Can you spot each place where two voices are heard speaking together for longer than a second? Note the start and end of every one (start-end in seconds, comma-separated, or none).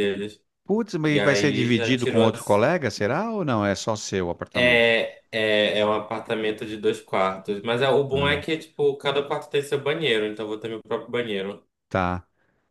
1.1-2.6